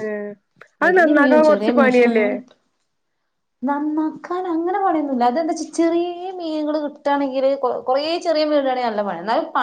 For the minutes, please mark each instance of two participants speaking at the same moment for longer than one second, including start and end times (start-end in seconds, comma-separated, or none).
0.8-2.3